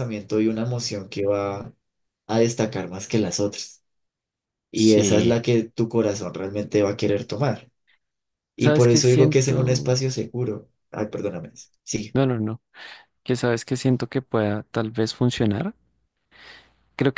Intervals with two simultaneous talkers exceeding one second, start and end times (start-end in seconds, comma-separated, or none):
8.6-10.0